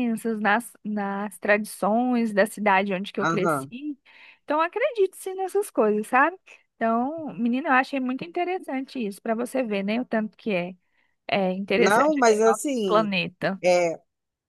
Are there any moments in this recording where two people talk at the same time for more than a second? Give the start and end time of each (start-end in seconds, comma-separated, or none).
11.8-13.1